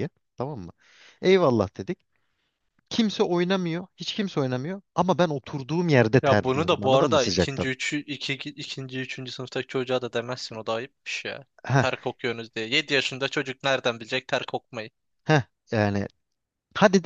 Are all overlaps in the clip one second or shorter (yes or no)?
no